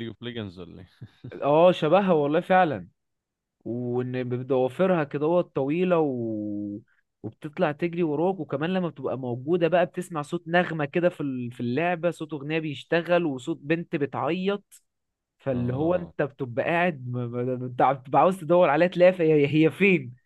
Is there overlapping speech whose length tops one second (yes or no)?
no